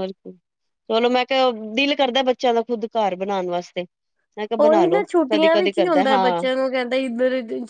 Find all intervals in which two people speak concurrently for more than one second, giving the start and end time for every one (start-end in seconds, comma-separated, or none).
4.6-6.5